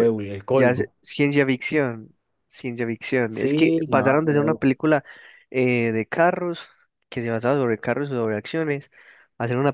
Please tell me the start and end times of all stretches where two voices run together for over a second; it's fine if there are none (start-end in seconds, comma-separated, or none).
3.3-4.7